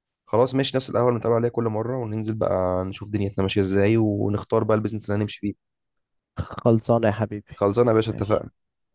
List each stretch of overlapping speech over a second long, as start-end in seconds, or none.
none